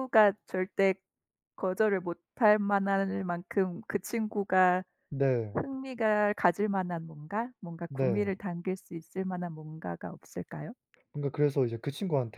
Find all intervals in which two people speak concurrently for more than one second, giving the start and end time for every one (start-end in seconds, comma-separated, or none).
none